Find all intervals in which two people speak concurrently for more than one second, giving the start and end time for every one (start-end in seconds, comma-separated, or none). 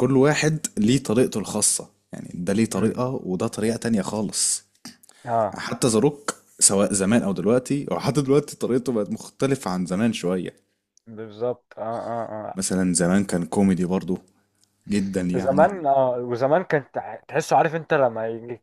none